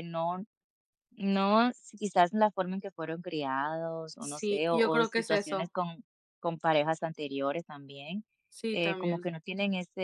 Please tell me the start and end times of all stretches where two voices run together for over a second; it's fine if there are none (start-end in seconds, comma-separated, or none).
4.2-5.7